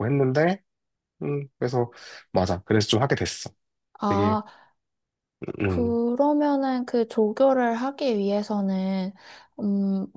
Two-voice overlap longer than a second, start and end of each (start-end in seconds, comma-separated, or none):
none